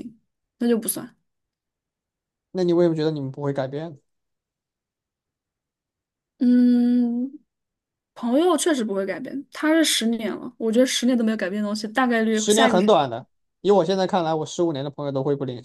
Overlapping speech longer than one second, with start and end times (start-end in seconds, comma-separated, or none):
none